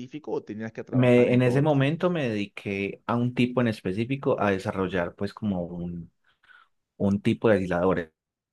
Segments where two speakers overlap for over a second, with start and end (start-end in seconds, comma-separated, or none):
0.9-2.1